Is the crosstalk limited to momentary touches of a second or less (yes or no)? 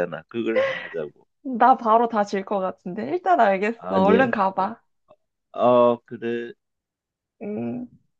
yes